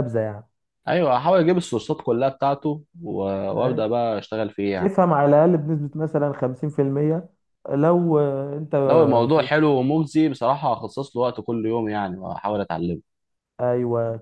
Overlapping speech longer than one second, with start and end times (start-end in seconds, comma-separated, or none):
none